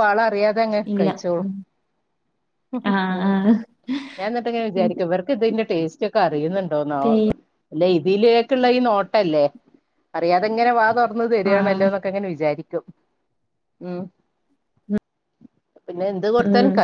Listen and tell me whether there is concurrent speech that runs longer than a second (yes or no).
no